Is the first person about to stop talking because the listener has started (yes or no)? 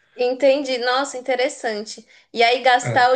no